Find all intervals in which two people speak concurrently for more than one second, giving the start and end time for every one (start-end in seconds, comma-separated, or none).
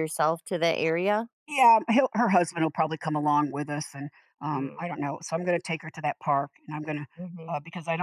none